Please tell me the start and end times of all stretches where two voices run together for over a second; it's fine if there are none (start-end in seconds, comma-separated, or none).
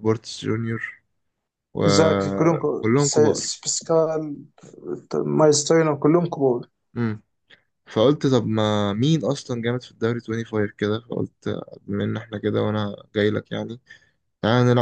1.8-3.5